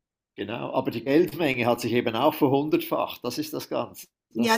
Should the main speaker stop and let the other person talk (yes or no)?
yes